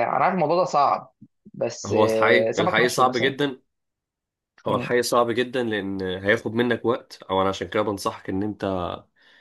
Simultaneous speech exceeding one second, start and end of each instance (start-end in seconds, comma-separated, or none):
1.9-3.3